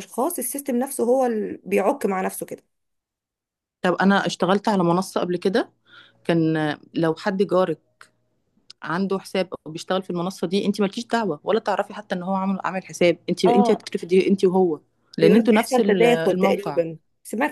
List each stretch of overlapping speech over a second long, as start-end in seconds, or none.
15.2-16.8